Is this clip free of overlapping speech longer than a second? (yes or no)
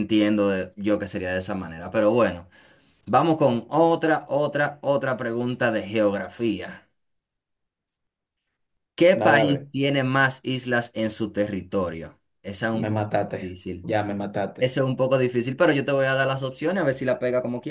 yes